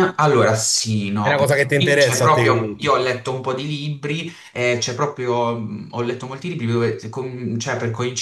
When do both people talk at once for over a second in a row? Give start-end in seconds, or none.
1.2-3.0